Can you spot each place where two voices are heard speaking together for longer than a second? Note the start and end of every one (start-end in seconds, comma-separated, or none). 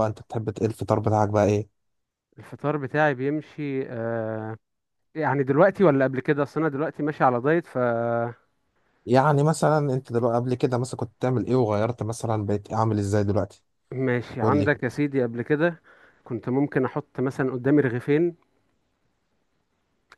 none